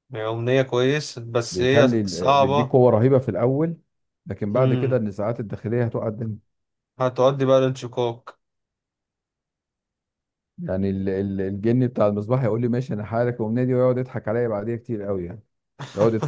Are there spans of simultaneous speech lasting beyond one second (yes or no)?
yes